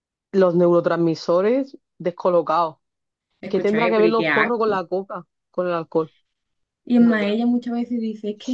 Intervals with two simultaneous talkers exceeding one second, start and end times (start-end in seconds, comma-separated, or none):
3.5-4.8